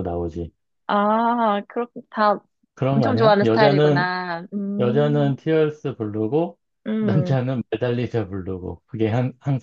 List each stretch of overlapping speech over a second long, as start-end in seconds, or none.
2.9-4.1